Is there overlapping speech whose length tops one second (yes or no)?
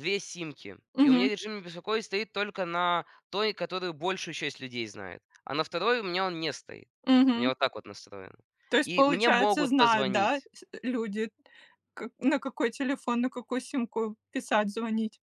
yes